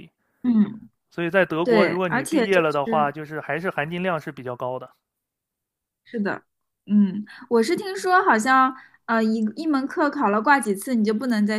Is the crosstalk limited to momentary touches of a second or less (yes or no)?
no